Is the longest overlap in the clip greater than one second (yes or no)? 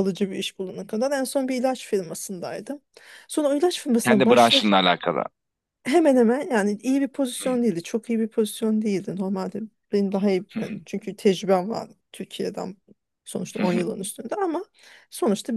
no